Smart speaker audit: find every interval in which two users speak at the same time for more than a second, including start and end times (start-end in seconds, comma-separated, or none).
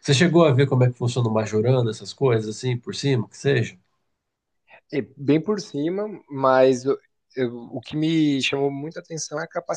none